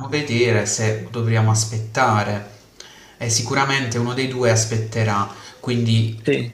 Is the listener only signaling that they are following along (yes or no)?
yes